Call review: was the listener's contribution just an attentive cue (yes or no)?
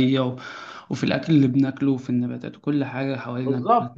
no